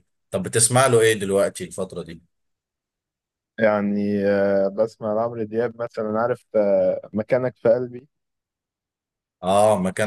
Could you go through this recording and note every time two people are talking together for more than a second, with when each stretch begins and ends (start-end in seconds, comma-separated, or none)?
none